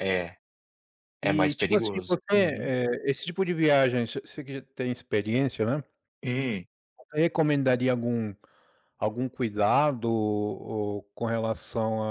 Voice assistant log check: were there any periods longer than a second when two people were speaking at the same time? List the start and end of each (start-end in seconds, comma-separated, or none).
1.2-2.7